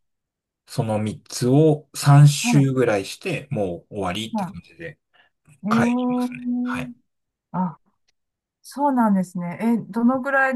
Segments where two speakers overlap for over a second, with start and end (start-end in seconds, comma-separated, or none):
5.7-6.9